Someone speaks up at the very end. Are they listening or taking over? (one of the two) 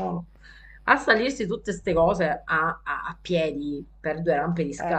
listening